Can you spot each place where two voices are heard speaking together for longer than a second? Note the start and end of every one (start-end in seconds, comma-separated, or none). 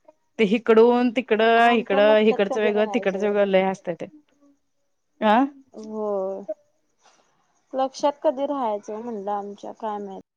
1.7-3.8